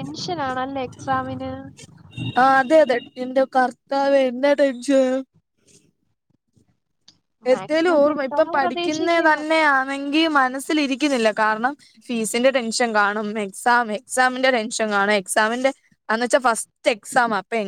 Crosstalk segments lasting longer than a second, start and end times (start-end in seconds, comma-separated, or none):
7.5-9.4